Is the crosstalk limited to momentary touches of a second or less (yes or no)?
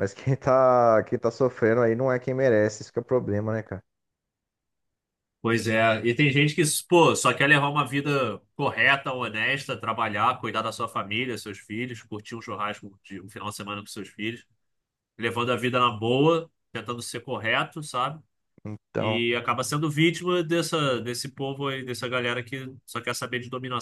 yes